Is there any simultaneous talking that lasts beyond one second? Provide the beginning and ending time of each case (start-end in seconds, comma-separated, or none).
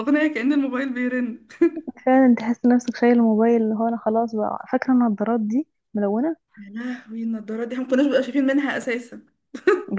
none